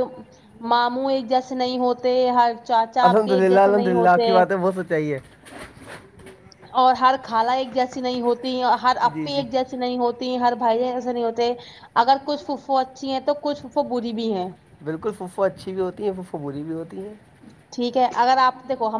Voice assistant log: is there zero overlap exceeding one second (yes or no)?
no